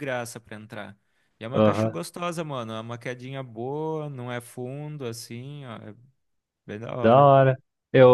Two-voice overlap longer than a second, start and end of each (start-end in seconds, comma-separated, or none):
none